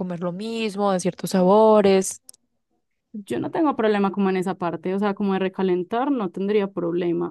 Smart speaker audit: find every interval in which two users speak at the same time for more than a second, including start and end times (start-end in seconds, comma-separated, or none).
none